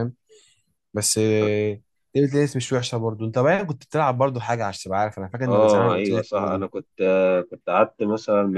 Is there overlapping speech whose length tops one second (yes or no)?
yes